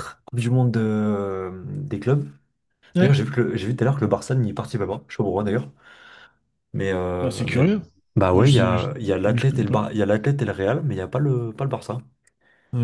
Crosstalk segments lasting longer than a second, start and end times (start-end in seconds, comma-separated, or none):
8.3-9.8